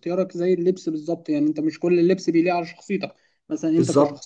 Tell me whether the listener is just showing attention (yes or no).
yes